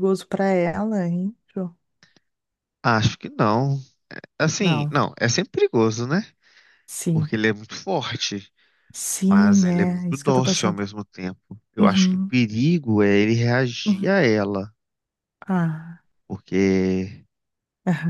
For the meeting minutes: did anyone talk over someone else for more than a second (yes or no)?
yes